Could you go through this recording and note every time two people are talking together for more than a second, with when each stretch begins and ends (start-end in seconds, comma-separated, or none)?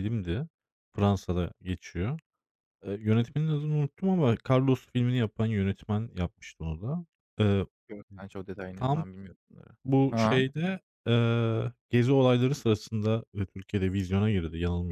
none